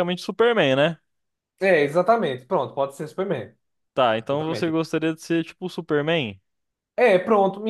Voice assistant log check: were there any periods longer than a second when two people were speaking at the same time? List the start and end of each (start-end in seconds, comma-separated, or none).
none